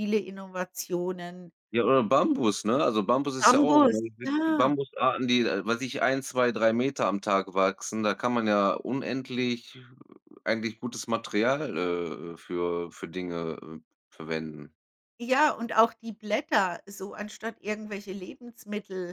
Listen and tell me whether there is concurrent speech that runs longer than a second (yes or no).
yes